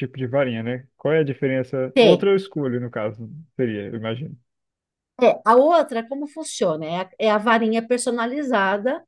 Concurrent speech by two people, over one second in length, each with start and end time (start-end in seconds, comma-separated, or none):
none